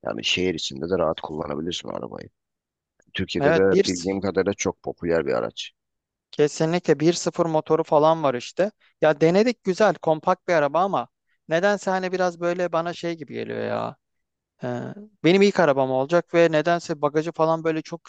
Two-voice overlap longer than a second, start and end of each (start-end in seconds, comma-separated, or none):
none